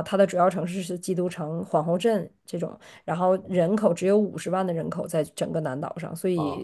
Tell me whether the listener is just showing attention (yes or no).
no